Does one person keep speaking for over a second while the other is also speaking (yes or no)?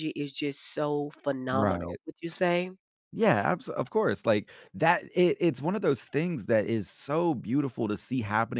no